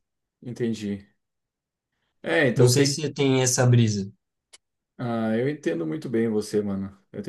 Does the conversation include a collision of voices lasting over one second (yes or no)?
no